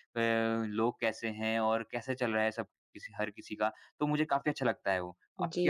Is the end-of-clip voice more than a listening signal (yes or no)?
yes